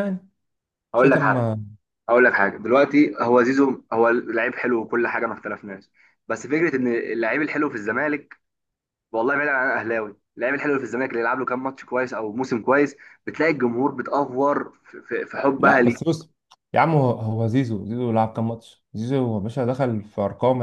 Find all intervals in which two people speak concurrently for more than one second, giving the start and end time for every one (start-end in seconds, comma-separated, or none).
none